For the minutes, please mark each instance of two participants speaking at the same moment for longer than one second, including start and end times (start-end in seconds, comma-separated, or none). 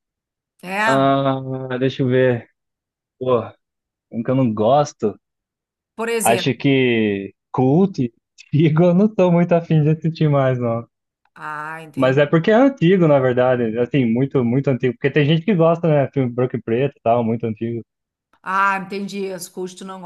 none